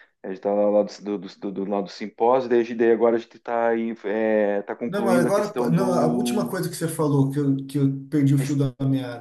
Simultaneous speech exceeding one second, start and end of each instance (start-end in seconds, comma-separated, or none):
4.9-6.5